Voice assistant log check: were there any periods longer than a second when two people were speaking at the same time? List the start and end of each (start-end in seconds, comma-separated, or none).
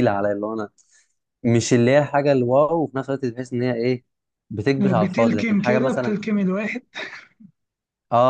4.8-6.1